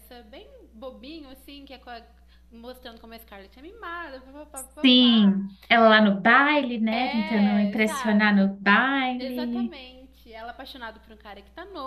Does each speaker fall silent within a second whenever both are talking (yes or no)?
no